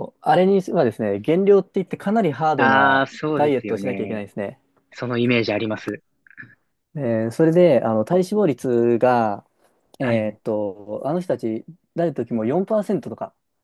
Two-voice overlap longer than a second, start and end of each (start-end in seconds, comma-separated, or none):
2.5-4.2